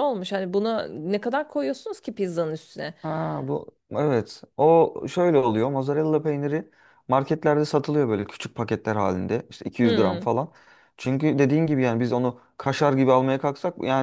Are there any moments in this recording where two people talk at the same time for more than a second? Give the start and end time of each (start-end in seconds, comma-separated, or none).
none